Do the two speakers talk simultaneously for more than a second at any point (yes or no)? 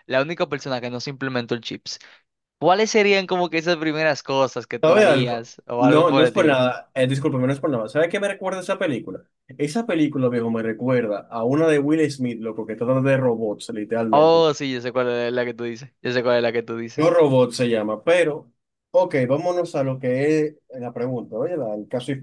yes